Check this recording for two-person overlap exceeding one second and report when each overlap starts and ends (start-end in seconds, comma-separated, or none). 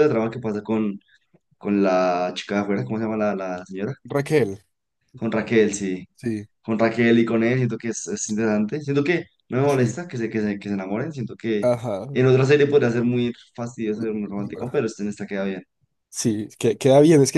none